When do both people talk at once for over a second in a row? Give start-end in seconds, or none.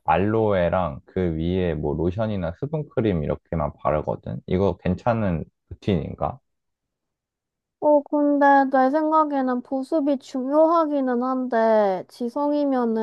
none